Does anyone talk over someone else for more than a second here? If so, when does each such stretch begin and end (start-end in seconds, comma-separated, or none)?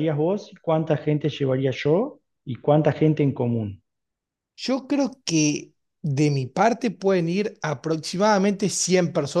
none